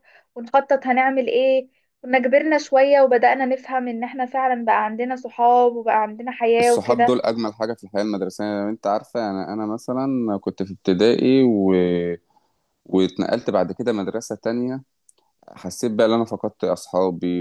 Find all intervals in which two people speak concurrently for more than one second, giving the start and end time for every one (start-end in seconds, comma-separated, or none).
none